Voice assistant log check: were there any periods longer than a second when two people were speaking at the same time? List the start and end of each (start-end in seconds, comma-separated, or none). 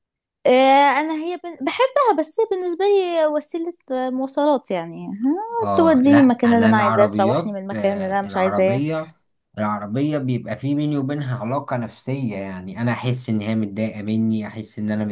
5.6-8.8